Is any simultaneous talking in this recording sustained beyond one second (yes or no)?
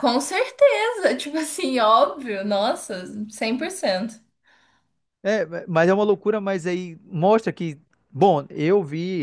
no